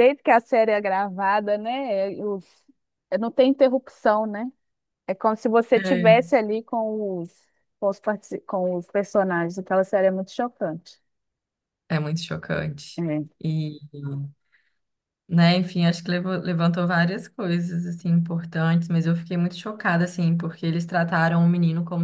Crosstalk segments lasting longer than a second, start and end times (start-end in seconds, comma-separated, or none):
none